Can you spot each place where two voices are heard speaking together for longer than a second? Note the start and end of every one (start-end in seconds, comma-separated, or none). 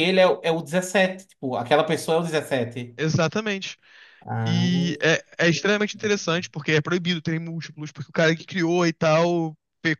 none